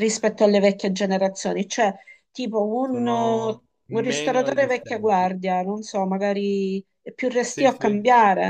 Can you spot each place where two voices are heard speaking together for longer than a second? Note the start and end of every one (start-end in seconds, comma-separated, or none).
2.8-5.3